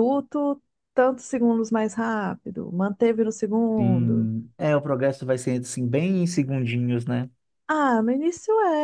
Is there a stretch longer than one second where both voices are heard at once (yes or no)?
no